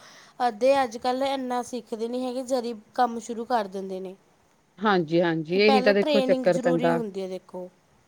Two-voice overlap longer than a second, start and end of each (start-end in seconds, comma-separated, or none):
5.5-7.0